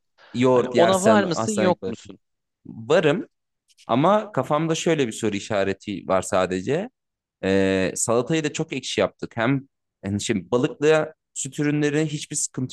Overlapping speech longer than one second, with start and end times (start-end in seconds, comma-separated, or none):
0.5-1.9